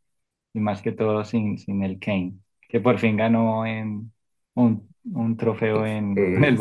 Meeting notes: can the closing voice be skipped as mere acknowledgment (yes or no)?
no